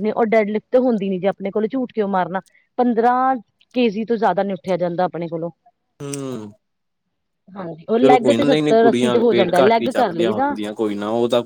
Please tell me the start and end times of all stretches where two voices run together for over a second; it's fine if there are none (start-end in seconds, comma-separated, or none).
8.6-10.5